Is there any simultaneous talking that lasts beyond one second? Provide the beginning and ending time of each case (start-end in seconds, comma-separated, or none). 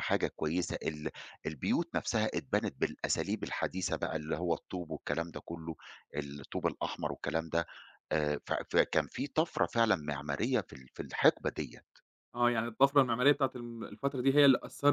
none